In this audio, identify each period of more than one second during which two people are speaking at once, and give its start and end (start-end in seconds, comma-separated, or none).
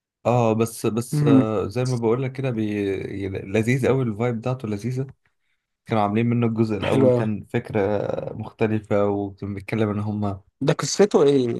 none